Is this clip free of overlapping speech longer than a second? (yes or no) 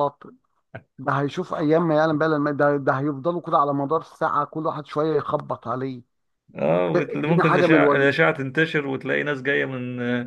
no